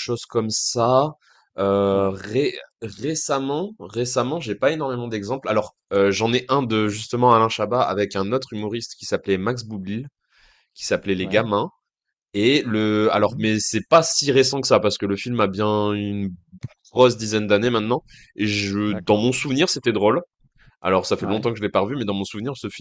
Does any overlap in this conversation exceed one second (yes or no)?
no